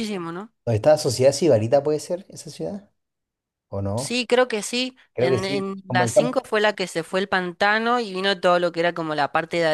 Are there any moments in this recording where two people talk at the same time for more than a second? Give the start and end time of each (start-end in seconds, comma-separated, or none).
5.1-6.4